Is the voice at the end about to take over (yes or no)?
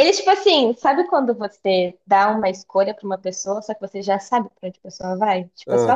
no